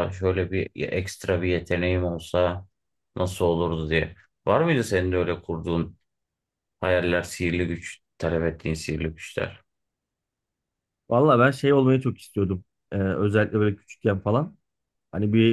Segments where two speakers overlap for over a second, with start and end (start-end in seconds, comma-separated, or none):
none